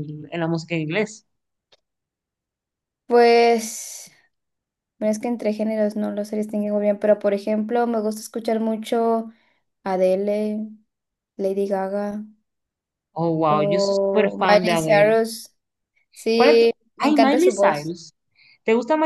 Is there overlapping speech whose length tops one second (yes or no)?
yes